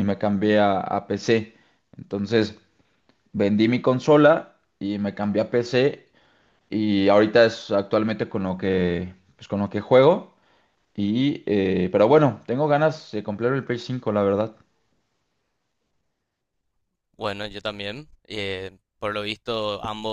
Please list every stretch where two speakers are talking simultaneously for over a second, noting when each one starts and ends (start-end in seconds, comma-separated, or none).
none